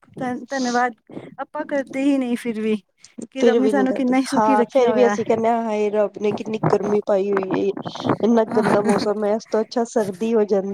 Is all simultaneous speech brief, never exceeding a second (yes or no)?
no